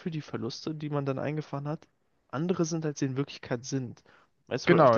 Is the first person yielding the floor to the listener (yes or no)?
no